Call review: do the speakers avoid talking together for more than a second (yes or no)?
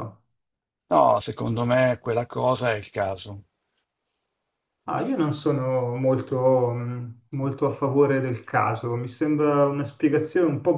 yes